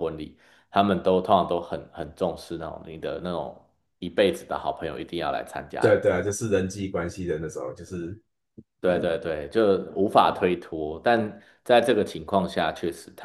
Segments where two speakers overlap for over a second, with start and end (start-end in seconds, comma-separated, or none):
none